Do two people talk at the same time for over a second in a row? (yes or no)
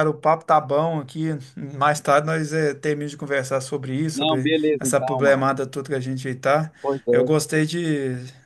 yes